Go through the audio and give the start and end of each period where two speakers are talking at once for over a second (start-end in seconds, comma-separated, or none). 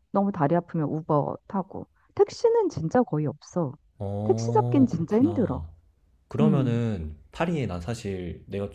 4.2-5.6